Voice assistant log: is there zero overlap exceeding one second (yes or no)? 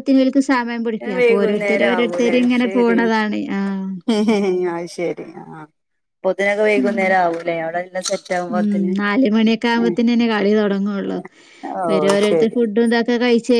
no